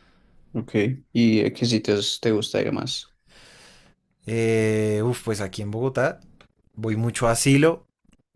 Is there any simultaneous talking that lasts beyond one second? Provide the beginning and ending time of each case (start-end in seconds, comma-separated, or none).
none